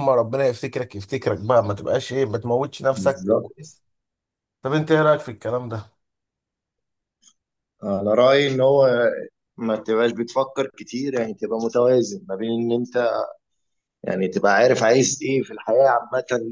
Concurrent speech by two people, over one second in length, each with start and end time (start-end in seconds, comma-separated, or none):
none